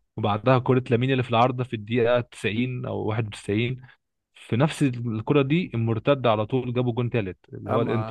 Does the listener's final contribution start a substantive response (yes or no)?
yes